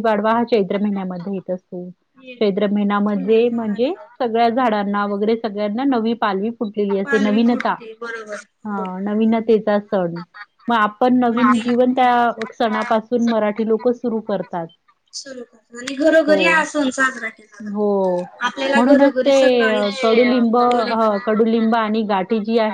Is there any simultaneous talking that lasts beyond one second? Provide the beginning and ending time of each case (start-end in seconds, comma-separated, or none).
3.1-4.7